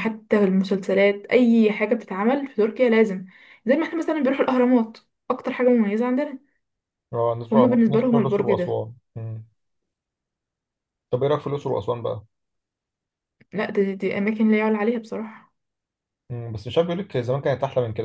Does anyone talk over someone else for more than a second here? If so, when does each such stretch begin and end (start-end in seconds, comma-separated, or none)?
7.5-8.8